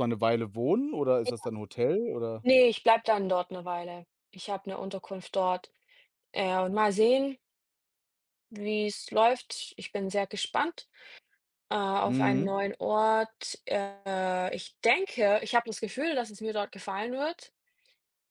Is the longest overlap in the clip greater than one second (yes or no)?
no